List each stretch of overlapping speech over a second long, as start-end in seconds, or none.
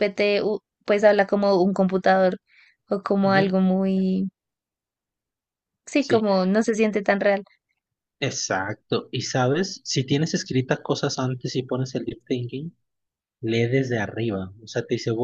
none